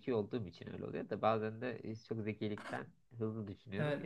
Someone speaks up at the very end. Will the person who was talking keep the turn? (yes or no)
no